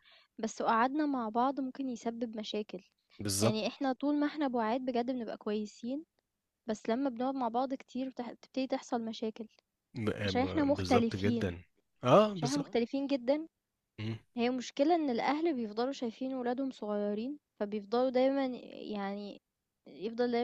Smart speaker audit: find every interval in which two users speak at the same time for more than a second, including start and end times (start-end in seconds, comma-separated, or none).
10.2-11.6